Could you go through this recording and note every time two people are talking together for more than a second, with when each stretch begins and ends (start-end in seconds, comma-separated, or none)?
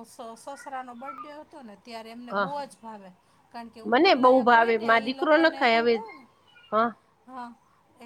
3.8-6.0